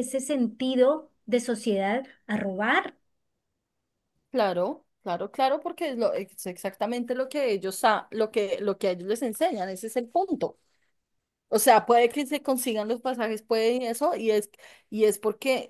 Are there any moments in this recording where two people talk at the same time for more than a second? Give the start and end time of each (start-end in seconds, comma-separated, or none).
none